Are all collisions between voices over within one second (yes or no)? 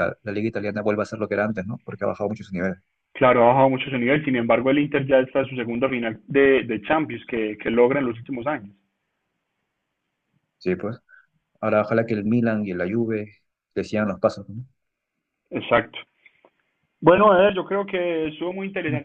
yes